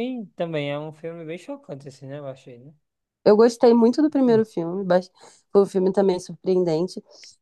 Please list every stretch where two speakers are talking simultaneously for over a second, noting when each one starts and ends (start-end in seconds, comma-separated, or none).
none